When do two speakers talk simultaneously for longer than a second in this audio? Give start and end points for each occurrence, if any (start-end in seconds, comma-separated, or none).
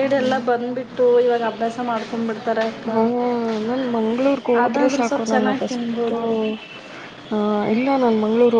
4.6-6.1